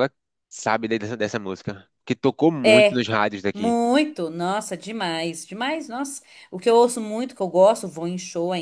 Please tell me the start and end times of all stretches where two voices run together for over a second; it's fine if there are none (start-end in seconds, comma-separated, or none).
none